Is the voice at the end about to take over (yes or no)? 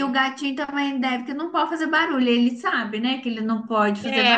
yes